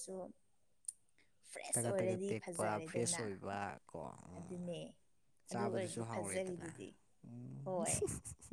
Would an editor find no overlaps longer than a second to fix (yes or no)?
no